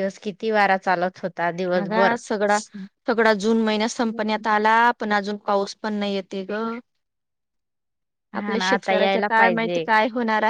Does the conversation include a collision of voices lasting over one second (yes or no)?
yes